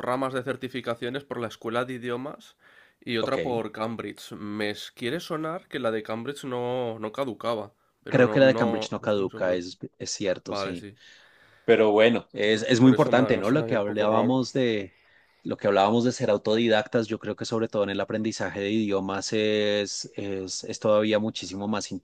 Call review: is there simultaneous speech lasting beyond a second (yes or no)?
yes